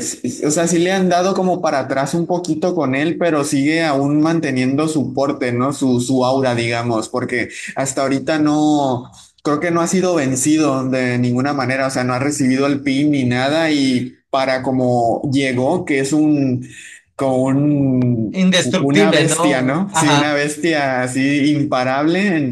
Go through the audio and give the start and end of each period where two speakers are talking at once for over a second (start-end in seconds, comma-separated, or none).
18.3-20.4